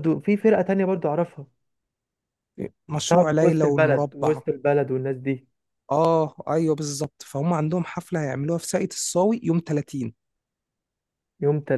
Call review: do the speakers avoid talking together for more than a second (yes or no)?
no